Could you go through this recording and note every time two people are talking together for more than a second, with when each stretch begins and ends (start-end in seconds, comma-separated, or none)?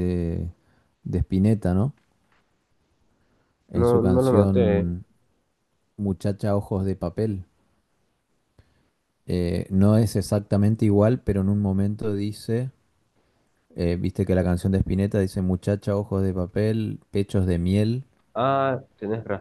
3.7-5.0